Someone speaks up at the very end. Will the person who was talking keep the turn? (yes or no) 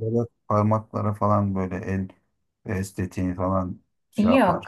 no